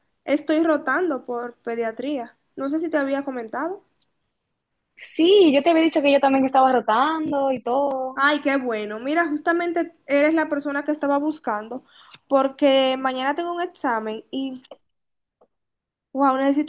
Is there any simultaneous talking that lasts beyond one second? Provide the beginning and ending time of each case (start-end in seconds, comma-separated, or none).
none